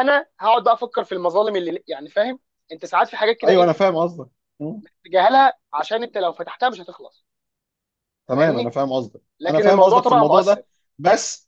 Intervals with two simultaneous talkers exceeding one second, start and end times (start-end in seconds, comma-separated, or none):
9.4-10.6